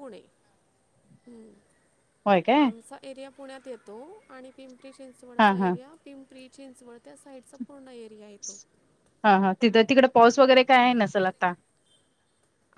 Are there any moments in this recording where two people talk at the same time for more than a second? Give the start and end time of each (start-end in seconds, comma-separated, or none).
none